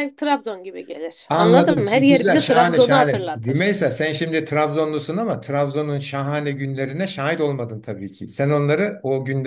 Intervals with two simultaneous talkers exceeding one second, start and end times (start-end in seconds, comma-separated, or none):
1.3-3.6